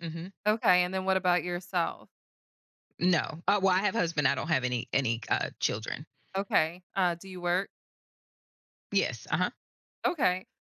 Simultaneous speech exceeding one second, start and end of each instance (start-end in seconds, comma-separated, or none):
none